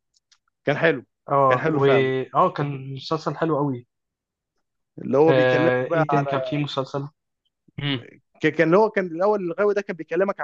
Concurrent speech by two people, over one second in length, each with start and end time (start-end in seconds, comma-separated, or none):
5.3-6.6